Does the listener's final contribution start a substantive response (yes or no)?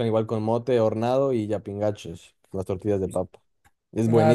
yes